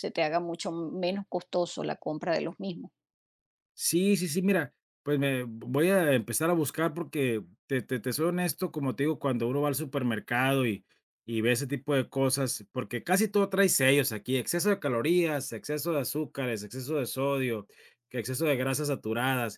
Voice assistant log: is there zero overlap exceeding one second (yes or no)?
yes